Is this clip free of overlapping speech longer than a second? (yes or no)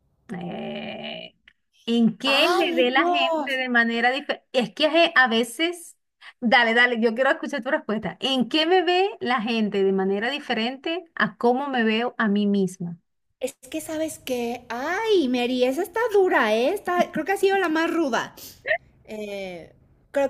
no